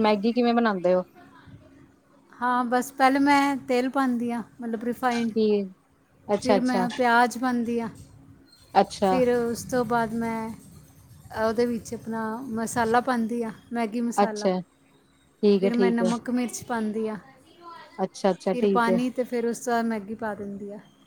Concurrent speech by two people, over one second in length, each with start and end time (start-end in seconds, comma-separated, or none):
none